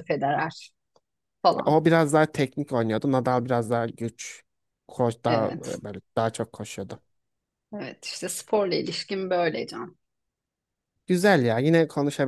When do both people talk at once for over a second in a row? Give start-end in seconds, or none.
none